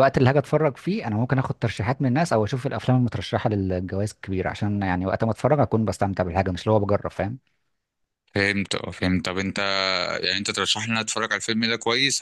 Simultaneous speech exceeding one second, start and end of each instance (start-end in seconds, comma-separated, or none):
none